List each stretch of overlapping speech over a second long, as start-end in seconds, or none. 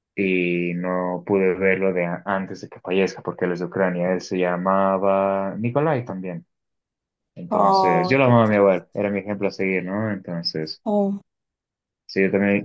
7.5-9.0